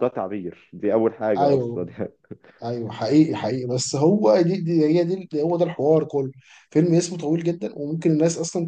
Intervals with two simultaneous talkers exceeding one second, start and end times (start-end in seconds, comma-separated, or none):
none